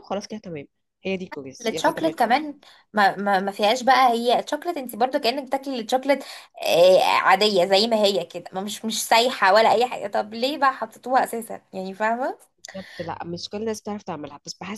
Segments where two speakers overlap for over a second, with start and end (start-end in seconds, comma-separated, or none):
none